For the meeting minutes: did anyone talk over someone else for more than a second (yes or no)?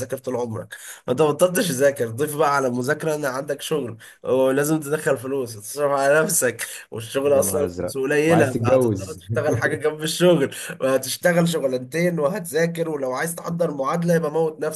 yes